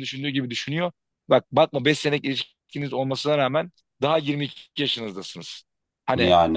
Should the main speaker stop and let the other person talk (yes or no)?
no